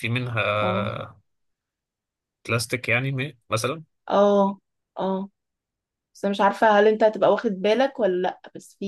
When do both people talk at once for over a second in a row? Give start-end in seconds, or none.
none